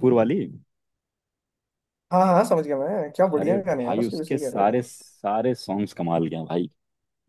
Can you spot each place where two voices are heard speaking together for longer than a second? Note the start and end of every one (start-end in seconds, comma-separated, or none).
3.4-4.9